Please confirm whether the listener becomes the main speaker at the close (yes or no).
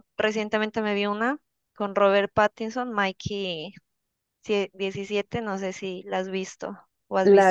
yes